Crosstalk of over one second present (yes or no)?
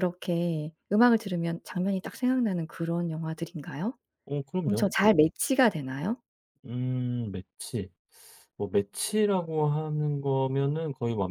no